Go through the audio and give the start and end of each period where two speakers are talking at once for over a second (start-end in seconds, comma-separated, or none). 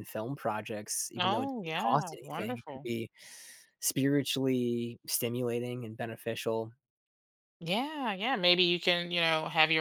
1.2-2.9